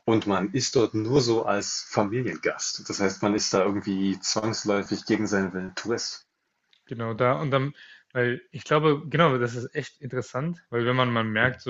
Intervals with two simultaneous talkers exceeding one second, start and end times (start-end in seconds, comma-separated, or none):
none